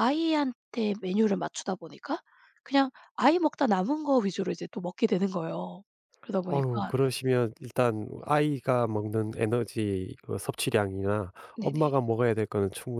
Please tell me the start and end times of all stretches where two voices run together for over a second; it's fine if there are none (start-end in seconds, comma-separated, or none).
none